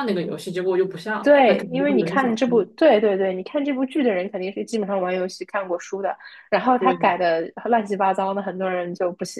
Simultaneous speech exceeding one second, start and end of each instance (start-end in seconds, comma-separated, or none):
1.2-2.6